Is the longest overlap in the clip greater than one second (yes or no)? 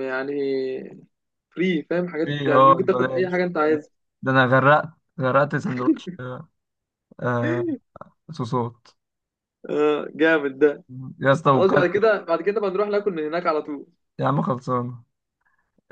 yes